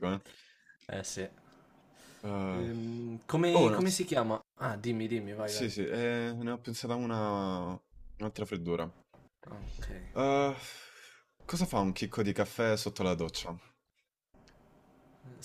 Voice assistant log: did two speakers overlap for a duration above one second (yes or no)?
no